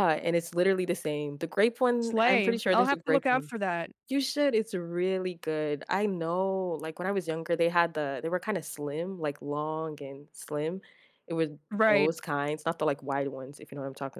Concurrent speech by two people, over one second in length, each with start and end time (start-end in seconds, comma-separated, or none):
2.0-3.5